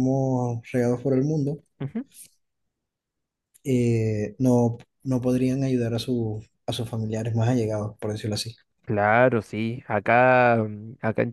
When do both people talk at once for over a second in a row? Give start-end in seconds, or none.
none